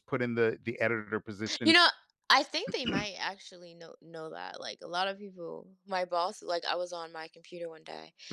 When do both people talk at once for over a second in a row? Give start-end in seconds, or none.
none